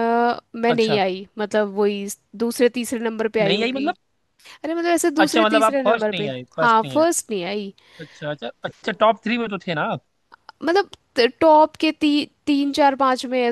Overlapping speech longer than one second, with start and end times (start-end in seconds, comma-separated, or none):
5.2-7.0